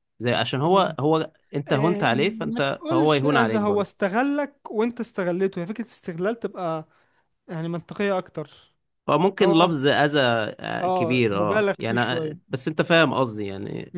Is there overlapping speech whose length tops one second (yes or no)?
yes